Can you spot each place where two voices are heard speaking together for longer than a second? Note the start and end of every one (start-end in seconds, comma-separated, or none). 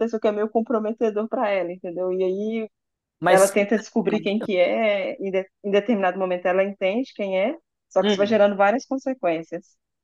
3.3-4.5